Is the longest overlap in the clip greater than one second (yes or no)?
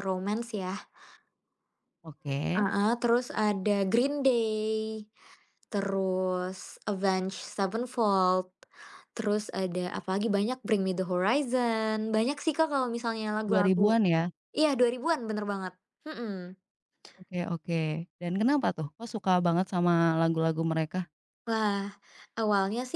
no